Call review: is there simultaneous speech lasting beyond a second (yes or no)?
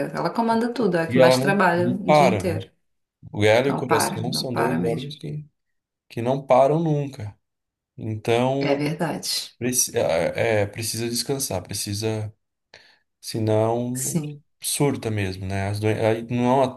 yes